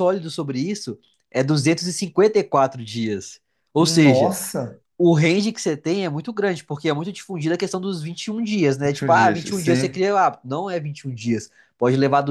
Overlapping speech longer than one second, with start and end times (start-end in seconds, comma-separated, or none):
8.8-10.0